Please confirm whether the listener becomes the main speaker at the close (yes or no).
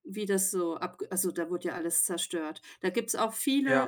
no